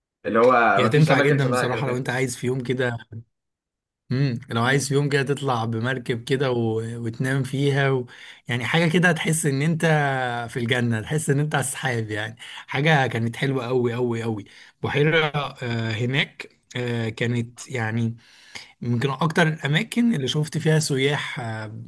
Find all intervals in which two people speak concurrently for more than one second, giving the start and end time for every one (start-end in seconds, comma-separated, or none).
0.7-2.1